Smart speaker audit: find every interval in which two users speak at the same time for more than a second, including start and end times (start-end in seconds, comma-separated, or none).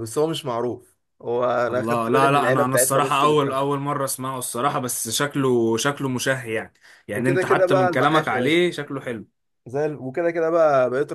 1.7-3.8, 7.1-8.6